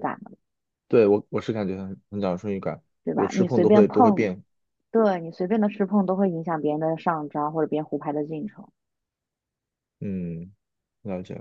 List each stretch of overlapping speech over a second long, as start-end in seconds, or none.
3.0-4.3